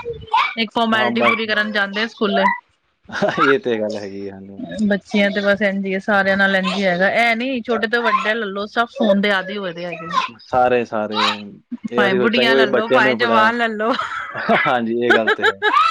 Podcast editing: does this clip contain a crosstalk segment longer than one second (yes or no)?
yes